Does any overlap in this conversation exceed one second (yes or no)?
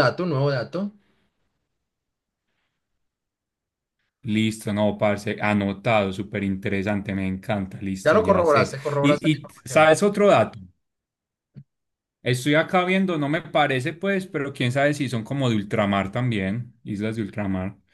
yes